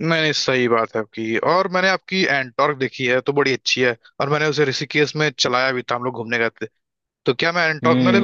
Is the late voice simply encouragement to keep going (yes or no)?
no